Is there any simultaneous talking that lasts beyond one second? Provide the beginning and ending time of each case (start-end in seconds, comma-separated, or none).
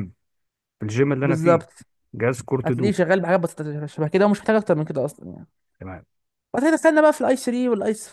none